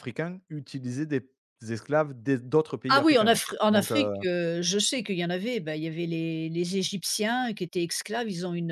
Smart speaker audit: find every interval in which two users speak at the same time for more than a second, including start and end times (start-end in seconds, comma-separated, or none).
2.9-4.1